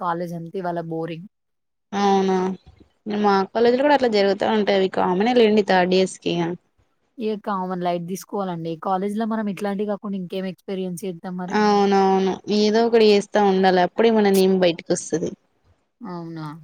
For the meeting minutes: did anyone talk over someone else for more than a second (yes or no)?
no